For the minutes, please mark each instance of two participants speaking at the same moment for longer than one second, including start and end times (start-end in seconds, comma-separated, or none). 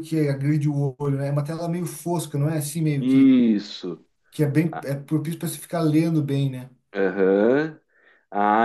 none